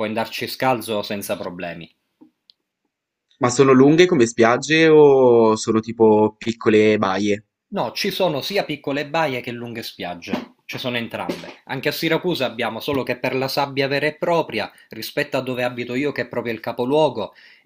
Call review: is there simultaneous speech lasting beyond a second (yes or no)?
no